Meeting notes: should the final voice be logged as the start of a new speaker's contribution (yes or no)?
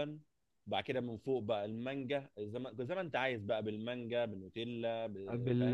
yes